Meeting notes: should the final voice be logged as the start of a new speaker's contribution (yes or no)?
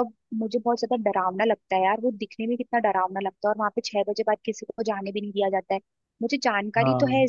no